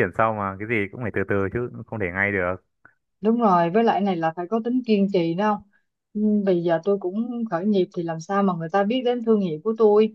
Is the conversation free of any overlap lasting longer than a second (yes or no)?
yes